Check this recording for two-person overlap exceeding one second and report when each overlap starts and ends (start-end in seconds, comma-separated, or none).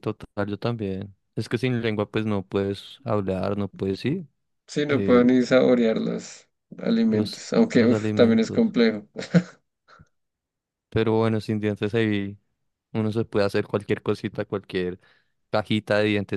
7.1-8.7